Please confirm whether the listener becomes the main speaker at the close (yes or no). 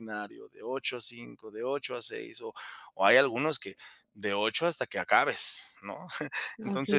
no